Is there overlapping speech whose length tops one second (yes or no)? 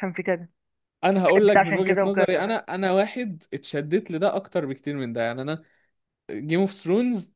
yes